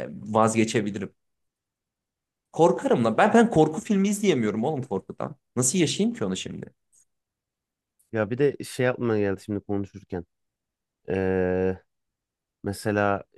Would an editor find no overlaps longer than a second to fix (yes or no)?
yes